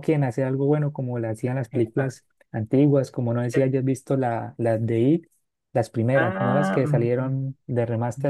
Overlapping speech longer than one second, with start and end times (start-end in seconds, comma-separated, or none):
6.1-7.4